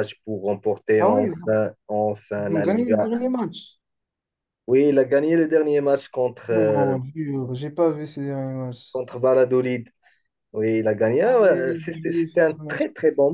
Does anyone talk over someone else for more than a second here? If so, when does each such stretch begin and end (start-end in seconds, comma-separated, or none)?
11.2-12.8